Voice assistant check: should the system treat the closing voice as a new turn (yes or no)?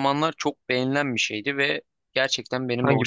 no